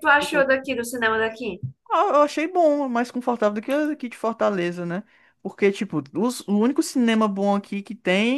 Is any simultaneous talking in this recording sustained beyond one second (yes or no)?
no